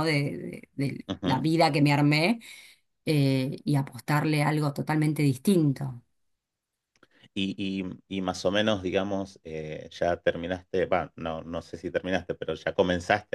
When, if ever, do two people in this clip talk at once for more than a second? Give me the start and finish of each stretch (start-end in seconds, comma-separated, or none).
none